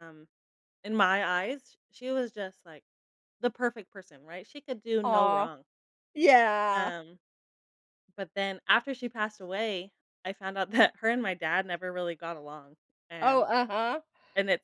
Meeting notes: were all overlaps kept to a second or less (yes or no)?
yes